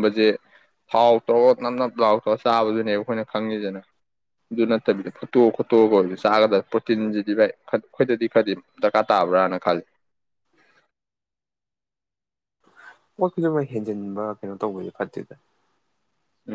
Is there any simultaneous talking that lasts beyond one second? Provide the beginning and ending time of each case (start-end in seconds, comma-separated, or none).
none